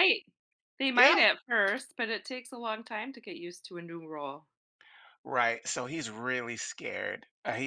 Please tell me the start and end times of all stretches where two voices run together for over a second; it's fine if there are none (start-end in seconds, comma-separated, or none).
none